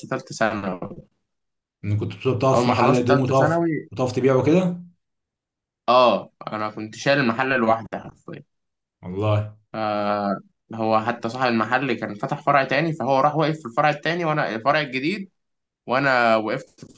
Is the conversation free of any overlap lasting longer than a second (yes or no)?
no